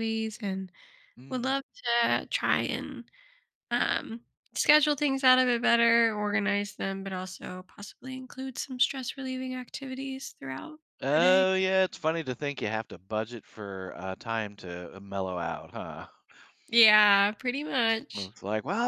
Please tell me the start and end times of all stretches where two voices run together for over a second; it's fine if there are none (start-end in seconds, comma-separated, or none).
none